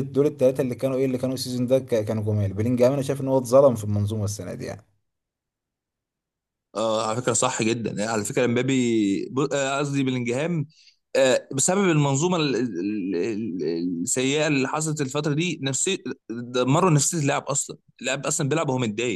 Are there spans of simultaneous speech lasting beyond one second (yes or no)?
no